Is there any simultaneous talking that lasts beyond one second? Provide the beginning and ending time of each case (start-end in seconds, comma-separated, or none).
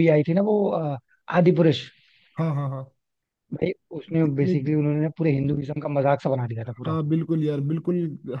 none